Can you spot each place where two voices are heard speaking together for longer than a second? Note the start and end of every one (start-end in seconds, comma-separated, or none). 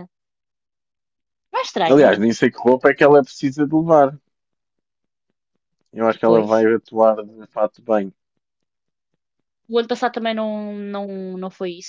none